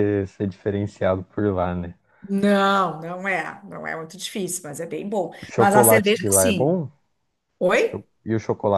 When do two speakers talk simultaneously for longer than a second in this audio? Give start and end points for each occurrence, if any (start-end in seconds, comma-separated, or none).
5.4-6.8